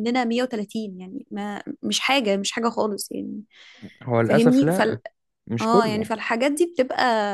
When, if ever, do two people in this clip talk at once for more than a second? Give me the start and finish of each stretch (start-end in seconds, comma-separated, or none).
none